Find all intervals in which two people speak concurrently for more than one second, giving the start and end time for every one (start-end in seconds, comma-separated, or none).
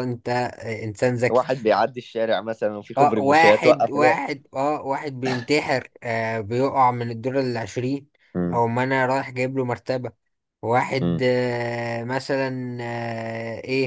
2.9-4.2